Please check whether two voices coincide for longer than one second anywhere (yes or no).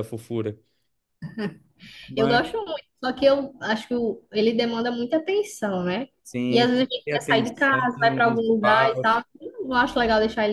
yes